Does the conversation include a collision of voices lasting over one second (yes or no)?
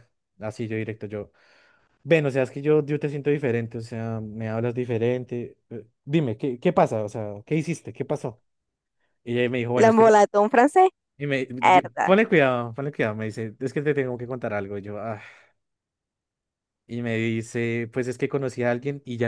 no